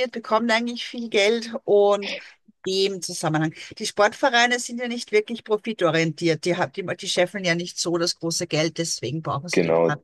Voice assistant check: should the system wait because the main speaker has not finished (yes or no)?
no